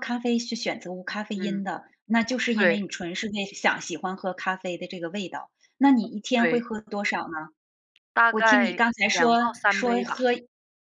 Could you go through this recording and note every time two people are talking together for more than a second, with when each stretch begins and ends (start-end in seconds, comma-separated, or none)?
8.3-10.1